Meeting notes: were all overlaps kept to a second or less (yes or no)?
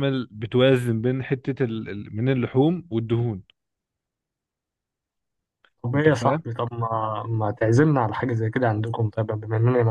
yes